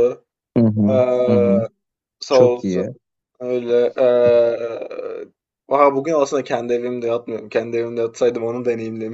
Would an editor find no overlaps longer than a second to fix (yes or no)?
yes